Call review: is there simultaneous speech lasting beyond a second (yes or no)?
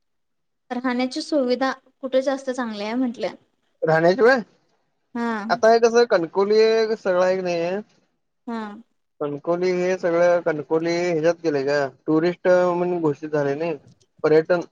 no